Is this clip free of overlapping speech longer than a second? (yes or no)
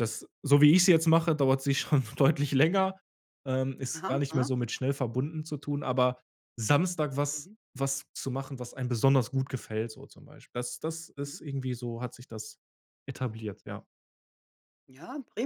yes